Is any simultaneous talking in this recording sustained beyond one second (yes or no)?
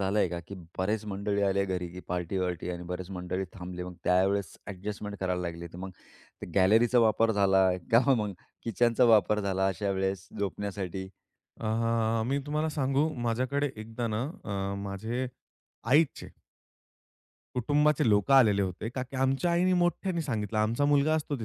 no